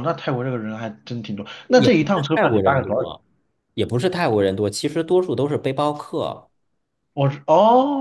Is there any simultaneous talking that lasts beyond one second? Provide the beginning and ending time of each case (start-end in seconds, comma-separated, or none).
1.8-3.1